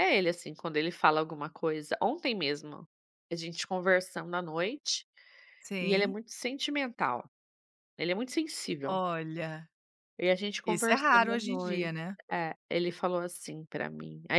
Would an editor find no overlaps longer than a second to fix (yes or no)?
no